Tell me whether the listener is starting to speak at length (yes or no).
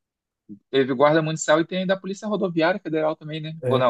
yes